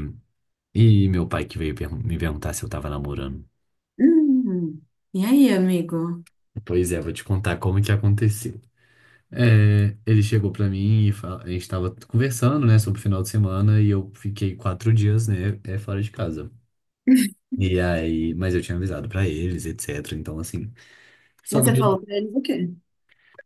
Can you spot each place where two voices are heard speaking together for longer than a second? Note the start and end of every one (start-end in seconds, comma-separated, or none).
none